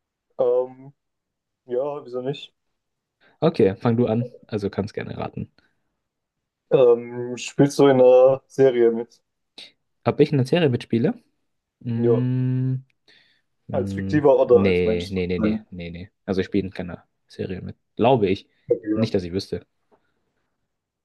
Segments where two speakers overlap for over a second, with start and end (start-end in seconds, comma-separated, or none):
13.7-15.7